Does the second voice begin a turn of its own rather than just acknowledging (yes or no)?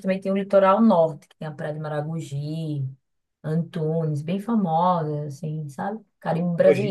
yes